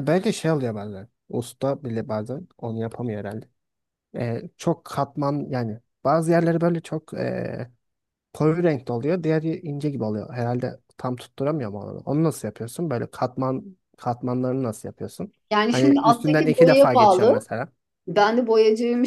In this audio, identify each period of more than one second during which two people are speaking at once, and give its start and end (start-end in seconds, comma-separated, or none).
15.5-17.4